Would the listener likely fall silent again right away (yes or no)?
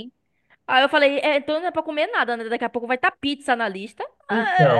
no